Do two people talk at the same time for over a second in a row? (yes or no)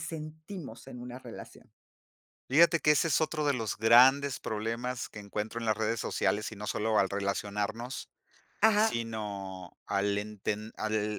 no